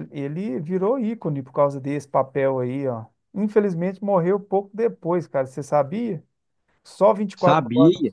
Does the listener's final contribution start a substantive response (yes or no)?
yes